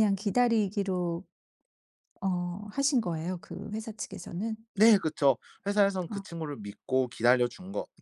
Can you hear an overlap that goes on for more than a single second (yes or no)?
no